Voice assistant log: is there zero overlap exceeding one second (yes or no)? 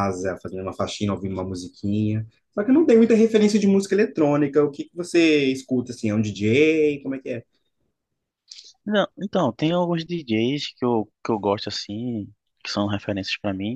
yes